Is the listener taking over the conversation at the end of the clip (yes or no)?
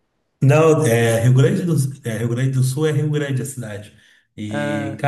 no